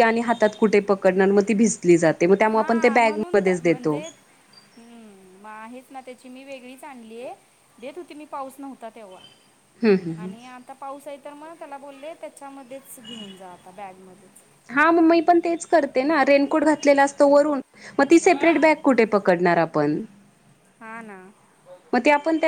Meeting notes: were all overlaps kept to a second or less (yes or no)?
no